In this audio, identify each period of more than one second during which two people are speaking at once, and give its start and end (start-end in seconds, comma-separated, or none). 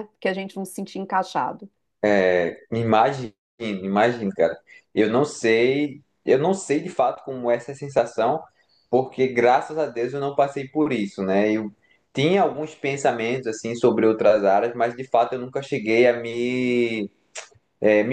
none